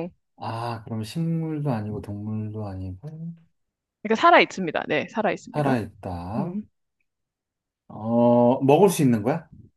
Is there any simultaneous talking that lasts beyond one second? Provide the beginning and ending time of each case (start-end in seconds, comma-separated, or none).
none